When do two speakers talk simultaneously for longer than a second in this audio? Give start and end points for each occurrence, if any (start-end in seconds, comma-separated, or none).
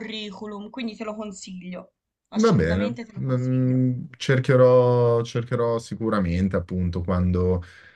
2.3-3.8